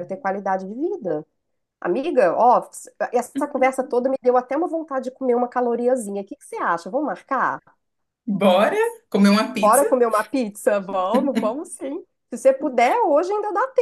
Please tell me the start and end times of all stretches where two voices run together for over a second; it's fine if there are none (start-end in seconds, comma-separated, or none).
none